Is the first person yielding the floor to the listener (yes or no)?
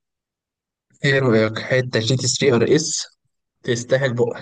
yes